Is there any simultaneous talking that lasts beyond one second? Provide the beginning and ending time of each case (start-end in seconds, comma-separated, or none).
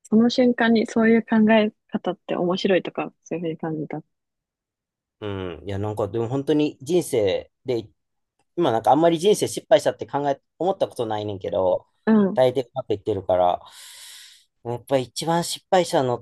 none